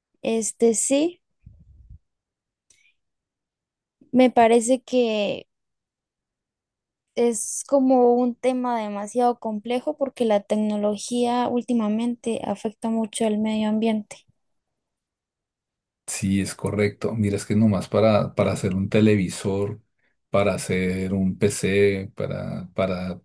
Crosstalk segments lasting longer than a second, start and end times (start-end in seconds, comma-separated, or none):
none